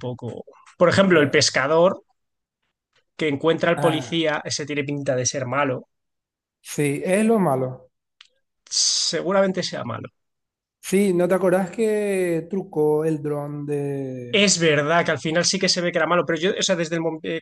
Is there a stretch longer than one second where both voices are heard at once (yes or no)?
no